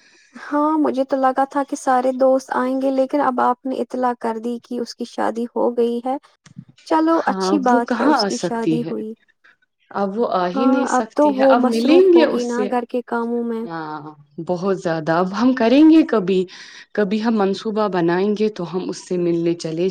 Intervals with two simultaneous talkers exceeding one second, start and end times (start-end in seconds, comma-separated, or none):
7.2-8.9, 10.6-12.7